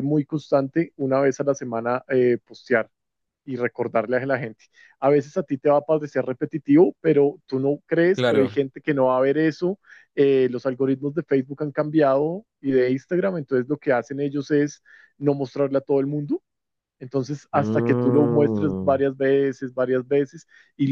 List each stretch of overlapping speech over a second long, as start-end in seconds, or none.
17.5-19.0